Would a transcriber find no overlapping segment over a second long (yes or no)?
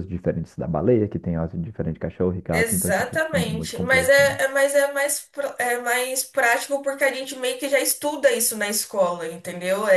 no